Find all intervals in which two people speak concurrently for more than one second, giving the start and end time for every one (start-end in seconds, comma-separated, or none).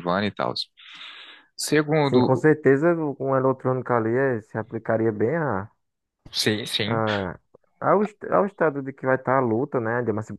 none